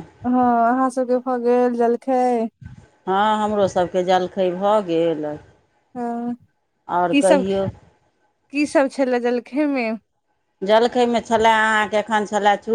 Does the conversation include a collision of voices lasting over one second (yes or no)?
no